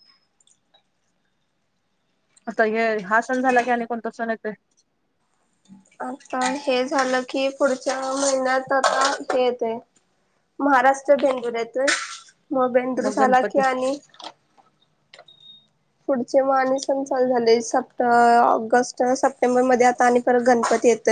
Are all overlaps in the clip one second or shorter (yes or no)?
yes